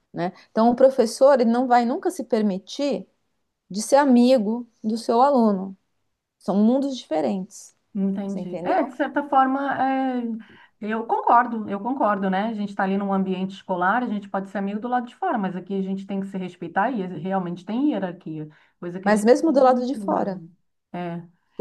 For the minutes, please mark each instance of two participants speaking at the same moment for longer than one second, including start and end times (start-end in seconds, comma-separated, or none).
19.1-20.4